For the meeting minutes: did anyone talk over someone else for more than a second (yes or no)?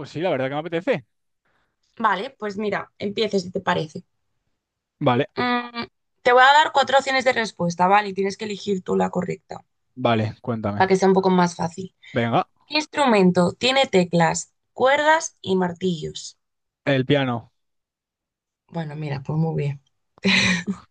no